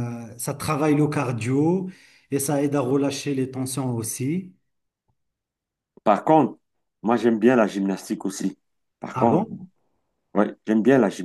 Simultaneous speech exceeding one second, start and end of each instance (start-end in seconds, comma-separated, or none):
none